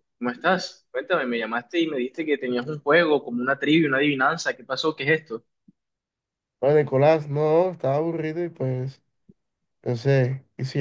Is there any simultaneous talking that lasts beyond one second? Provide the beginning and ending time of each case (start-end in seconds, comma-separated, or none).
none